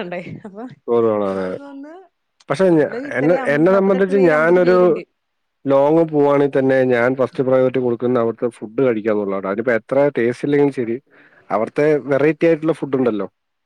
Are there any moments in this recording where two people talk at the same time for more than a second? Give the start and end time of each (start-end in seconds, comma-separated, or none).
2.7-4.8